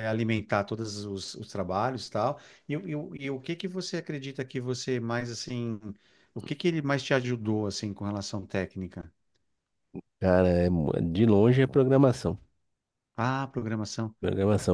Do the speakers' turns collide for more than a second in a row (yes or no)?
no